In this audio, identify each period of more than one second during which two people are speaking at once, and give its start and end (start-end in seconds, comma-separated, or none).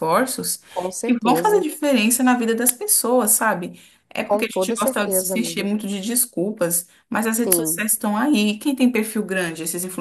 4.2-5.7